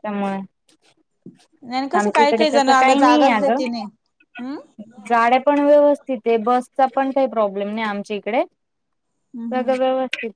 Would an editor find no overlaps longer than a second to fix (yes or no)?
no